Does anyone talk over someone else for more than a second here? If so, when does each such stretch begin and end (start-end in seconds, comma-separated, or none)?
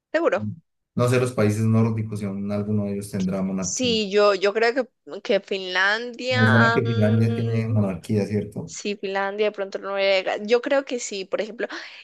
6.3-7.9